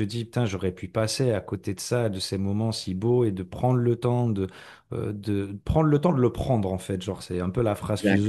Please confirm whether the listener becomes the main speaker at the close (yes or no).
no